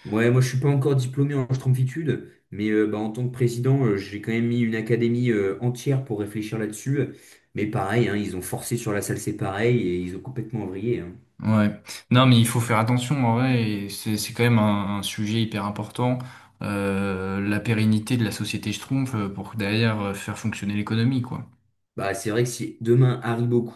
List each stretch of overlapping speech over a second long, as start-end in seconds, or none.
none